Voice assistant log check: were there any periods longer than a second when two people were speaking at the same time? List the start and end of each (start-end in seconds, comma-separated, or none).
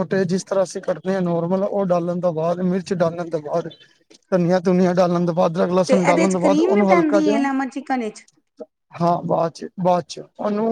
5.9-7.3